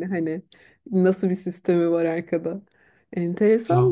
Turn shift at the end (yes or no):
no